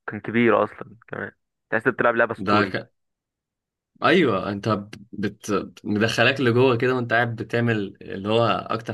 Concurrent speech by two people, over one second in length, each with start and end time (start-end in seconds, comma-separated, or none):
none